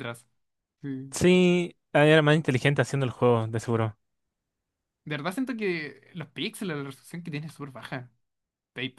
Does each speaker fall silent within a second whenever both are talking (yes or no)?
yes